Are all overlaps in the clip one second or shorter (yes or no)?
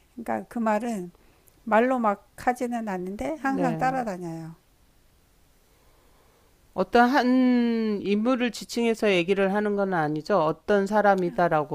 yes